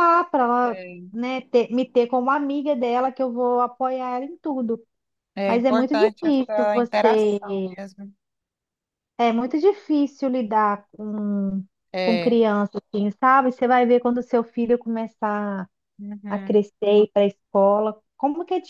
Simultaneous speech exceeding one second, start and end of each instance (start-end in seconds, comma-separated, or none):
5.5-7.4